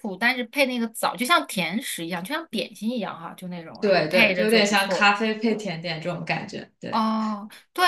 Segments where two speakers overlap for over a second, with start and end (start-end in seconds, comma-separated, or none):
3.8-5.2